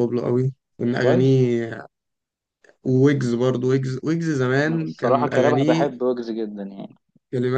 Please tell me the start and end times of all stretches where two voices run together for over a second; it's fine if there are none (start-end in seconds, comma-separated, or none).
4.7-5.9